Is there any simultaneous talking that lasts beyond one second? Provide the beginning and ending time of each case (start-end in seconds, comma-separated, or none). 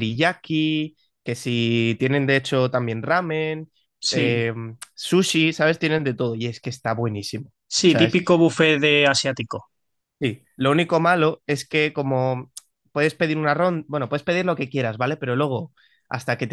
none